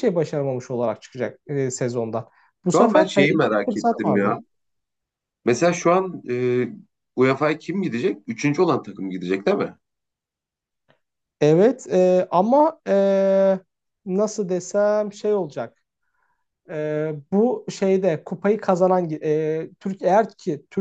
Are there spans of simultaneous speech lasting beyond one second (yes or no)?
yes